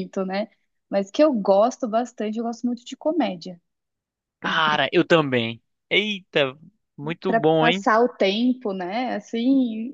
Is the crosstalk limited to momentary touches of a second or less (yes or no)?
yes